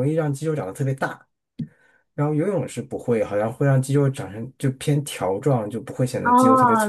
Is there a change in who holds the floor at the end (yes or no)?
yes